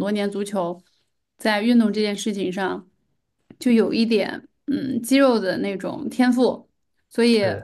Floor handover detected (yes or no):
no